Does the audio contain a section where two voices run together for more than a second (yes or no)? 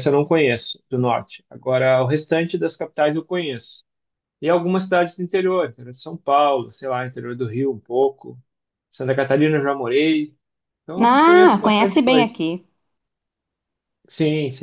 yes